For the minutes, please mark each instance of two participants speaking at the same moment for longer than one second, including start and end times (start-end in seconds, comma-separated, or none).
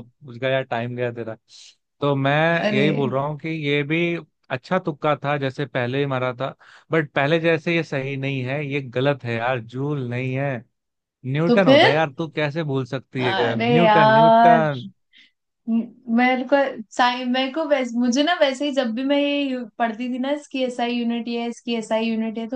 13.2-14.6